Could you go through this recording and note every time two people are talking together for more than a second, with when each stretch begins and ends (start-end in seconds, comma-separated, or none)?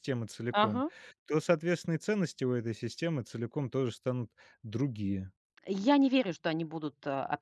none